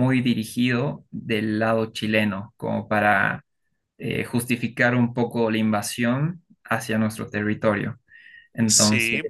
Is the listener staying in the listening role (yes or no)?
no